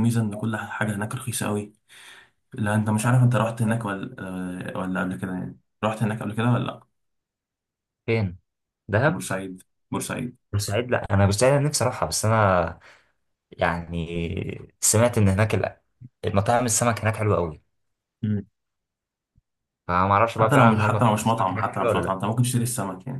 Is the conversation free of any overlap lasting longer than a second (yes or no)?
no